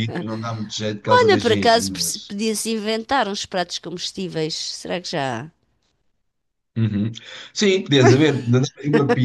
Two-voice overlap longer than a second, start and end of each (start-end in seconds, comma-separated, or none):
1.0-2.4